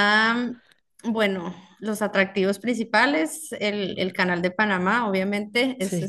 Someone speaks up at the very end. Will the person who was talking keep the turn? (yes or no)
yes